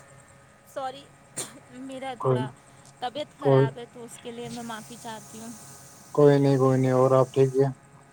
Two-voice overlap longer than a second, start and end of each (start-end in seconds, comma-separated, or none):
none